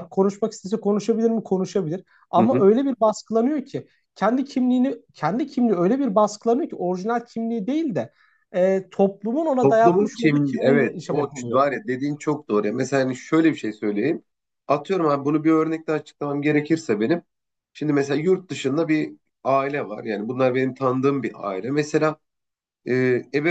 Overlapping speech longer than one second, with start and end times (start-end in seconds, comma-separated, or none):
9.6-11.6